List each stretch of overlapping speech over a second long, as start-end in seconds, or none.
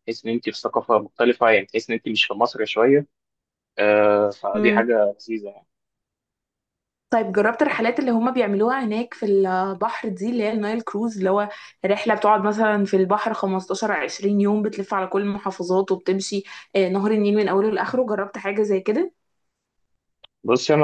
none